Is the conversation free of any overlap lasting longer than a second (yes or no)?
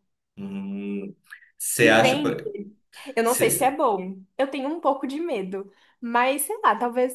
yes